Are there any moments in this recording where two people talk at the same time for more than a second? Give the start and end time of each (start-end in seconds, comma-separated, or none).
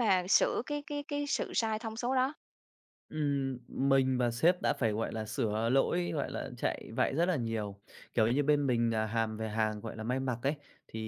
none